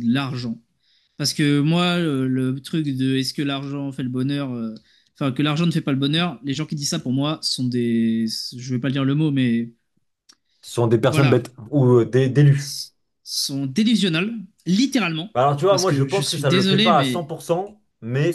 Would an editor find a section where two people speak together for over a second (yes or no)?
yes